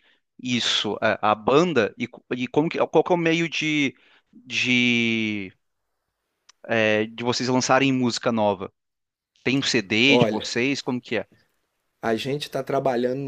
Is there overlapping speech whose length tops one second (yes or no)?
no